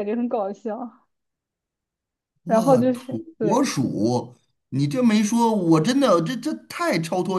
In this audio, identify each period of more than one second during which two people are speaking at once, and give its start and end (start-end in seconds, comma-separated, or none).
2.5-3.7